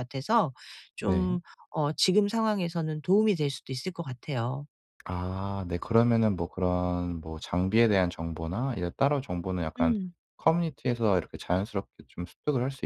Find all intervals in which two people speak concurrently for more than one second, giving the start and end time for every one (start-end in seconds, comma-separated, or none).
none